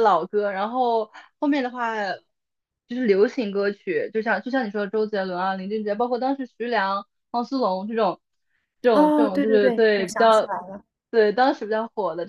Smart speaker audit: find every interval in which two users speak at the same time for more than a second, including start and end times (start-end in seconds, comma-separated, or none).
8.9-10.5